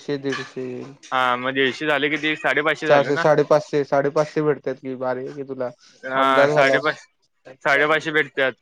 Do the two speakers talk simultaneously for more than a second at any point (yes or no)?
no